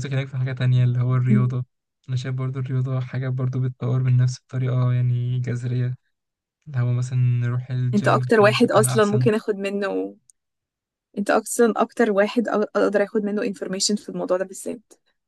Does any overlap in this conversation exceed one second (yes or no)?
yes